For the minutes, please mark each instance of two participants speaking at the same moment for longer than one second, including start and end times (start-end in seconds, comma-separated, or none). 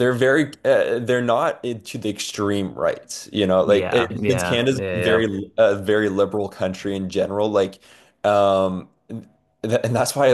3.6-5.2